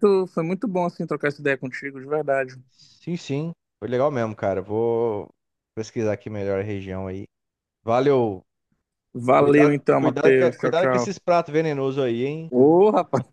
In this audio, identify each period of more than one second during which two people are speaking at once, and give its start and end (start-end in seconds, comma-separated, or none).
9.3-11.1